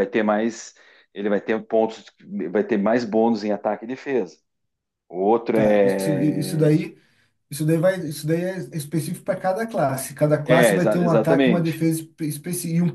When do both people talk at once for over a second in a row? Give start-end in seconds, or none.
5.5-6.8, 10.4-11.8